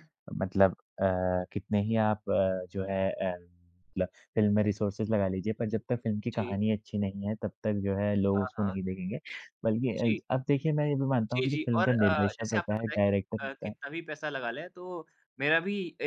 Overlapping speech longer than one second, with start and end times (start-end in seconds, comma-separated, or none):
11.3-13.7